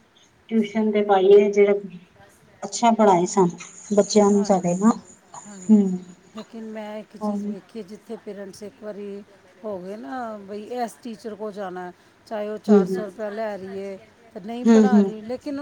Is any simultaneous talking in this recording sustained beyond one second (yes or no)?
no